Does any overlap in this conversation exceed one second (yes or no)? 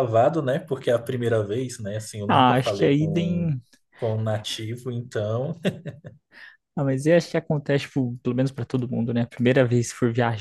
yes